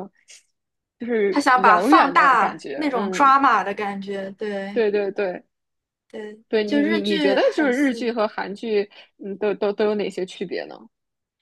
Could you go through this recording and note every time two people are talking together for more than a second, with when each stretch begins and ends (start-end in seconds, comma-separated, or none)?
1.3-3.4, 6.5-8.2